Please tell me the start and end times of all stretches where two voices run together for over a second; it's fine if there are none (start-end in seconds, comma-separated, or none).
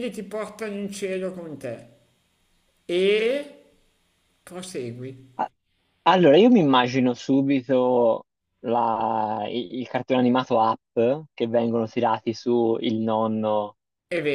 none